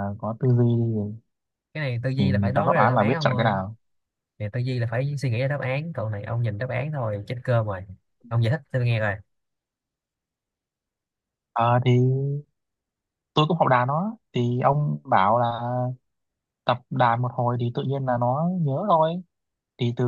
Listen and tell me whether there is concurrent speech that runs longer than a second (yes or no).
yes